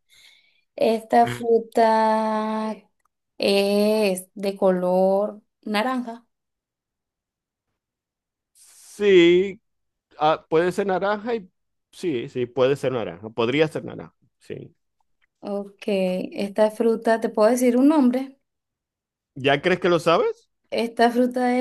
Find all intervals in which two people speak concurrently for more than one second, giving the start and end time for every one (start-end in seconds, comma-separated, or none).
none